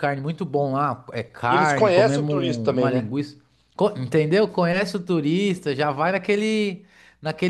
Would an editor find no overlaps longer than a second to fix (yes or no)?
no